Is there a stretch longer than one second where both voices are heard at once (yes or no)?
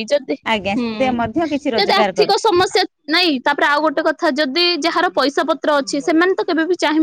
no